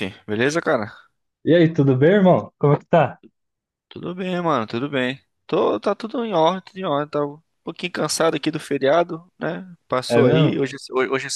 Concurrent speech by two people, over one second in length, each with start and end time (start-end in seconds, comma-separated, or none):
none